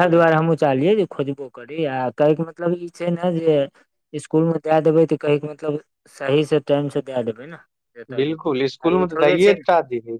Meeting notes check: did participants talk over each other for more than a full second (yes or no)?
yes